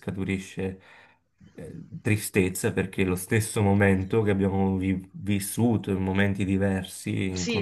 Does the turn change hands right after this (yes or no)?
yes